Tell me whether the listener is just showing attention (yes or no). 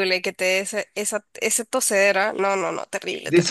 no